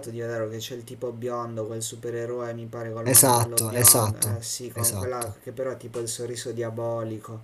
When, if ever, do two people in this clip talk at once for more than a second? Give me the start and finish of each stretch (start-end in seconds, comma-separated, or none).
3.0-5.4